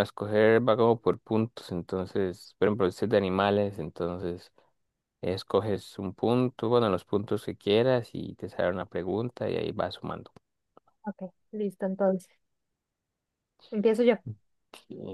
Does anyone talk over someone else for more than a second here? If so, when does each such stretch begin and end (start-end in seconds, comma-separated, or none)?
none